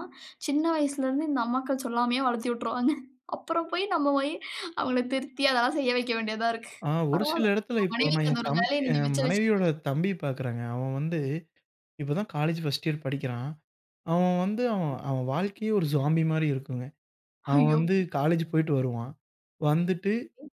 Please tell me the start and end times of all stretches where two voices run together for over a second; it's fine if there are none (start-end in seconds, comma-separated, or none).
7.2-9.6